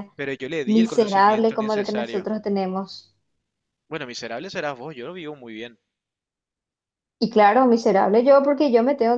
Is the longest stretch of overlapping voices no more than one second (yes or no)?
no